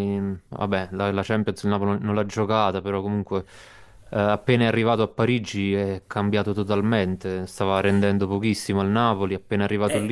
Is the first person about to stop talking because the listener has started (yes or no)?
no